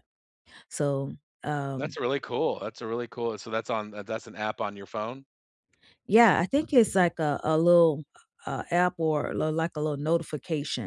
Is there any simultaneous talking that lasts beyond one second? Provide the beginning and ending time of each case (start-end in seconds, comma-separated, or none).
none